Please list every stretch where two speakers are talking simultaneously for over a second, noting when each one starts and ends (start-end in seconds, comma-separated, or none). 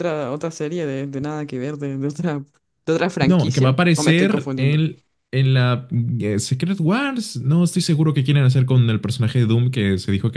3.2-4.8